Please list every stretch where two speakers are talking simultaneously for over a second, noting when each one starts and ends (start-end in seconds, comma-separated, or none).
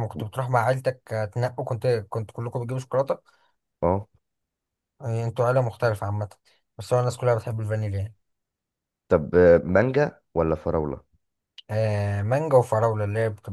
none